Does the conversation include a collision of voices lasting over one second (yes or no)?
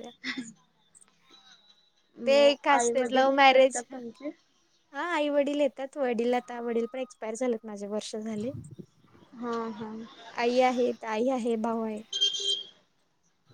yes